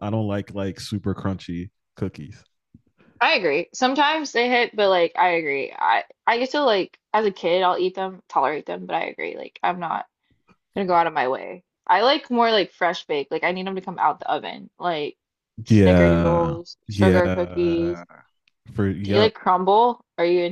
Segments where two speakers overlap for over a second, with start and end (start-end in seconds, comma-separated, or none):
15.7-18.0